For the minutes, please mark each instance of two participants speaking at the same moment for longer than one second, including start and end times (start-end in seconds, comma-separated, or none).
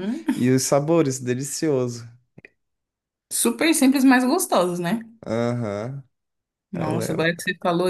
none